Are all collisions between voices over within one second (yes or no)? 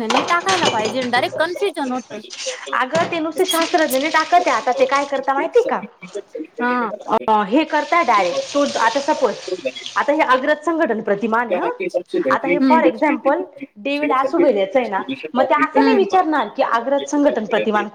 yes